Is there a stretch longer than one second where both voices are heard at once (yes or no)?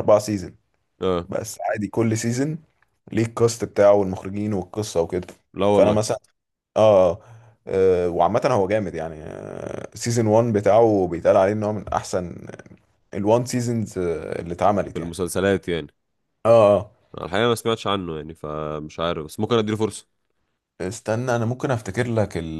no